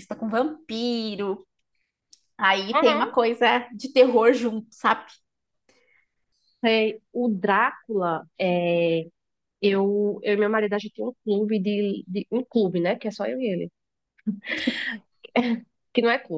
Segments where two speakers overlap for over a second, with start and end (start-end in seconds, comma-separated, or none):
none